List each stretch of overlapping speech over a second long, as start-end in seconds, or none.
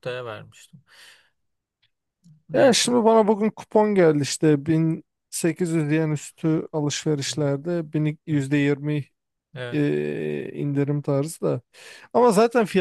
none